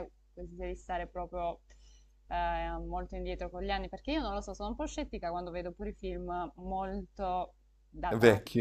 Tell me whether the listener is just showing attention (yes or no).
no